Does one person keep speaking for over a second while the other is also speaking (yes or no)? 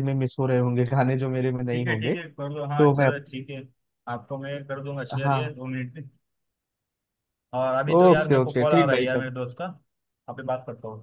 yes